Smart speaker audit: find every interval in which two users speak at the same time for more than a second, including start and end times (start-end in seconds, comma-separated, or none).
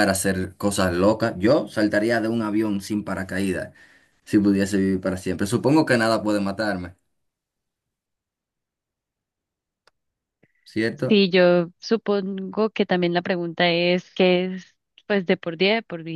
none